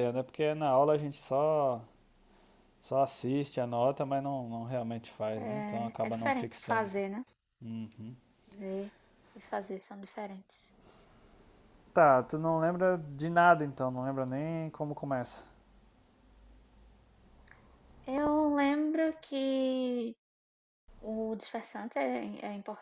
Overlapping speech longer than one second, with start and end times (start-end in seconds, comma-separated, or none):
5.4-6.9